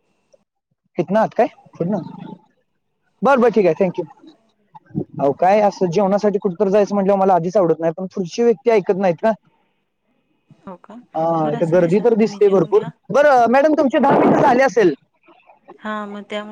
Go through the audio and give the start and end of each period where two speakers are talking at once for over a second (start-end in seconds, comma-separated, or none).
11.5-12.9